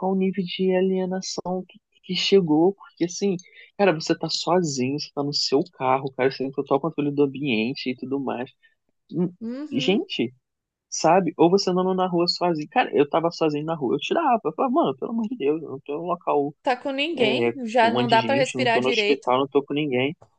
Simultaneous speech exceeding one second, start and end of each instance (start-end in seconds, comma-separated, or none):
17.2-19.3